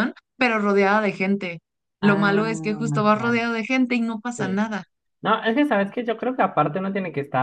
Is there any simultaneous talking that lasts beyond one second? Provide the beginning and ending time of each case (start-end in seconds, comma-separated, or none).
2.0-3.4